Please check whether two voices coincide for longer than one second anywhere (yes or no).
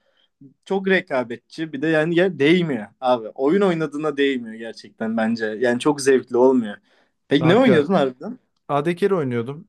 no